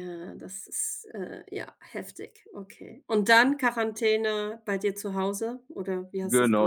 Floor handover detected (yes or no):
yes